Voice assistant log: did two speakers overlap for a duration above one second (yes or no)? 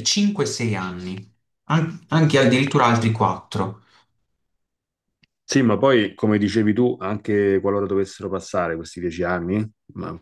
no